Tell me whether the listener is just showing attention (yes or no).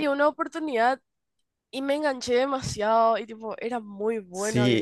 no